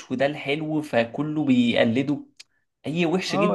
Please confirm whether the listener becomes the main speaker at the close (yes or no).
yes